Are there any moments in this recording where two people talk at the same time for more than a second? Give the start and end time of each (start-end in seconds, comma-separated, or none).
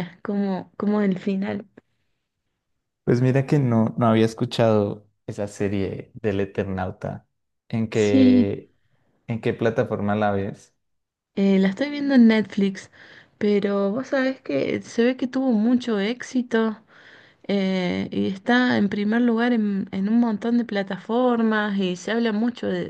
none